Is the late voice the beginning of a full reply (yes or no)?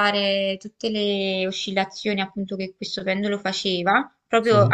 no